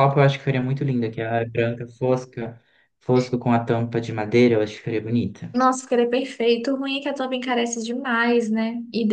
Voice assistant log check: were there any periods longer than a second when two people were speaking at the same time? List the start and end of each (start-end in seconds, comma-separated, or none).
none